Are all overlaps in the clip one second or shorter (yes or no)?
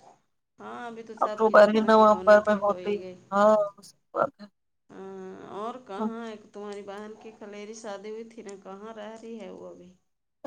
no